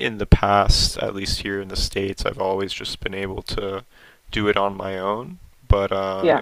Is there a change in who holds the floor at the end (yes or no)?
no